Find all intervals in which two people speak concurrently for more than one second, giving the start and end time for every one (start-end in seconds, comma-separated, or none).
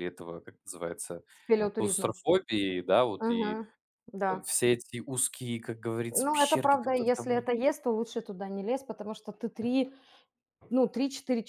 6.2-7.5